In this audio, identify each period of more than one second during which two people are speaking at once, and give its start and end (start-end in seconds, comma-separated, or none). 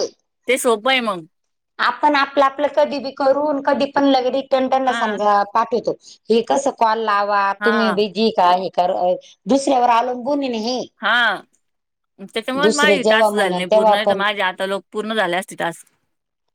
12.6-14.2